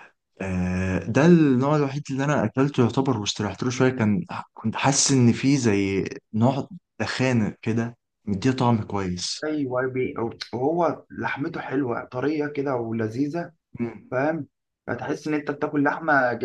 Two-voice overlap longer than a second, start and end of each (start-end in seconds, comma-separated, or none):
none